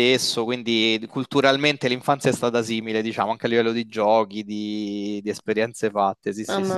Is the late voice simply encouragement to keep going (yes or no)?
no